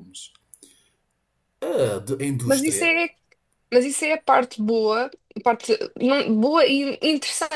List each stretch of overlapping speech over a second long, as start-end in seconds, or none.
none